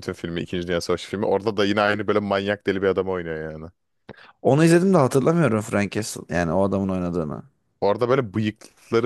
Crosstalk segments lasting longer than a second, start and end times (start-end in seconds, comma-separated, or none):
none